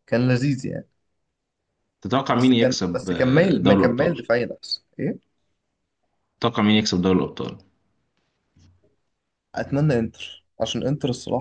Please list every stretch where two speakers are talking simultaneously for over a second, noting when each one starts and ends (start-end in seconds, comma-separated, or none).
2.3-4.2